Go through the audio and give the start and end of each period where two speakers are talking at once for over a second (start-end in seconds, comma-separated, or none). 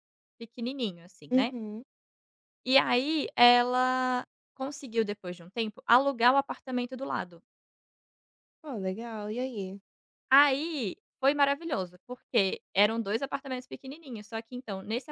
none